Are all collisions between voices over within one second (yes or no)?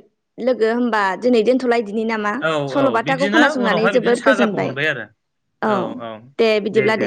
no